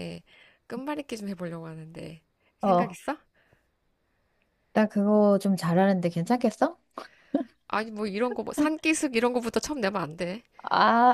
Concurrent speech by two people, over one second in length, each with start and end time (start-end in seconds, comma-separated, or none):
none